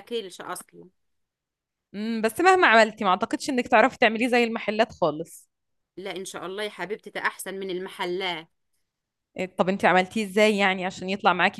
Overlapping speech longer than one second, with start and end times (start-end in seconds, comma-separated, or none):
none